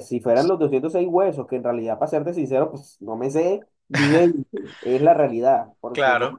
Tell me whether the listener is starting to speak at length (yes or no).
no